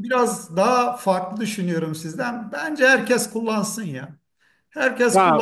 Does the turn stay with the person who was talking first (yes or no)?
yes